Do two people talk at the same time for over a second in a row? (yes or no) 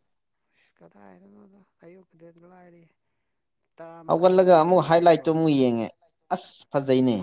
yes